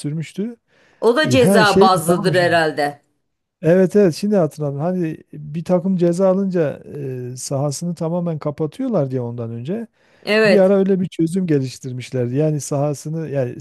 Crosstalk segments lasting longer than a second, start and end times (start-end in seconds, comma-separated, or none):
1.2-2.5